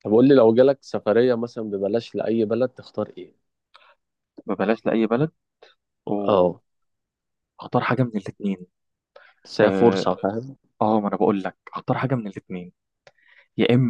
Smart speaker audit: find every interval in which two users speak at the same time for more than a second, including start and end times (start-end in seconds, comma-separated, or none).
none